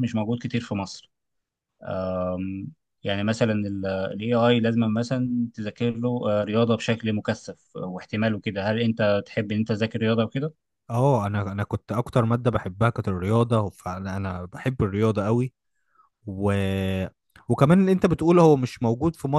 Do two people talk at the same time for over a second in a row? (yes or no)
no